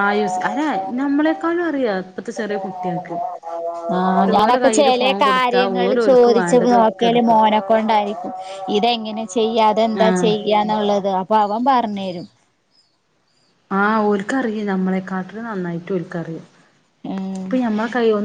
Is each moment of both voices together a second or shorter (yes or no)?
no